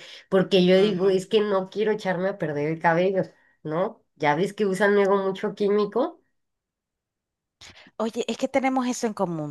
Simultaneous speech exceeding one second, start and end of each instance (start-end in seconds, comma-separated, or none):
none